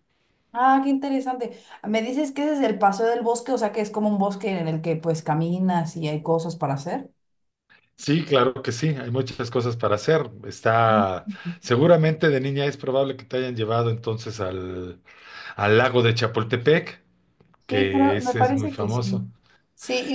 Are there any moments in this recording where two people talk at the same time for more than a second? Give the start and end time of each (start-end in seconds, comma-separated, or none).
17.7-19.2